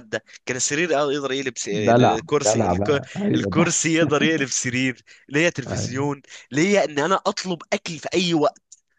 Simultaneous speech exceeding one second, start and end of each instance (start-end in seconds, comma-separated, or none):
1.7-3.9